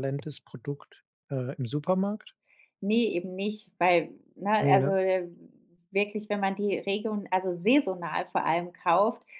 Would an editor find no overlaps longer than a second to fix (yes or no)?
yes